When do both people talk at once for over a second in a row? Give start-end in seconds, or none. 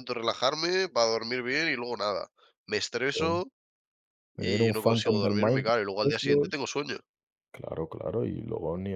4.4-6.6